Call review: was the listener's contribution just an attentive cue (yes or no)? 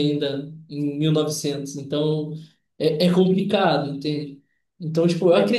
yes